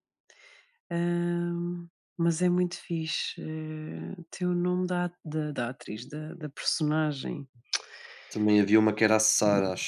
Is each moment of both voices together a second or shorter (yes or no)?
yes